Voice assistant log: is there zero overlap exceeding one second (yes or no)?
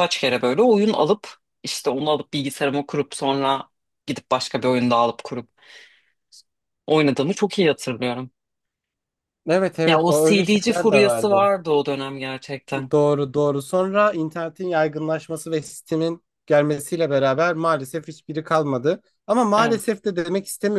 no